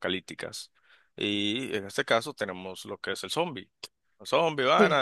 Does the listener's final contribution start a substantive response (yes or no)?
no